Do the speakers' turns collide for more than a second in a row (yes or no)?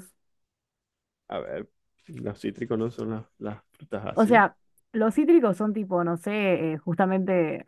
no